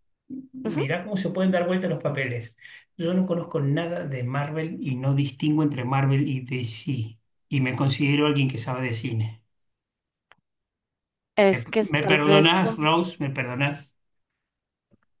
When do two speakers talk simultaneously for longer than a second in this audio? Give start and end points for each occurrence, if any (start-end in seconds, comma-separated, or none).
11.5-12.9